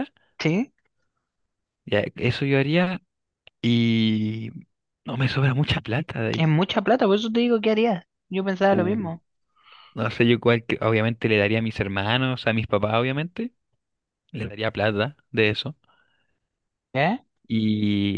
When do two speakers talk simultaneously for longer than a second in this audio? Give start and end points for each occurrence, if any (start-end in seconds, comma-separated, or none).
none